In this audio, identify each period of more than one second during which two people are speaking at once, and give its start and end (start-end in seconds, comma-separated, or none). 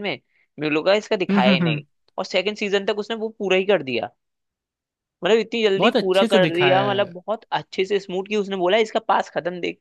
5.8-7.1